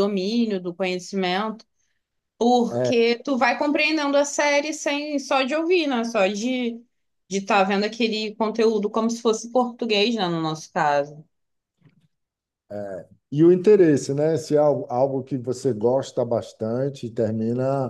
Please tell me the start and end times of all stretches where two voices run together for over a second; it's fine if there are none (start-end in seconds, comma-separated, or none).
none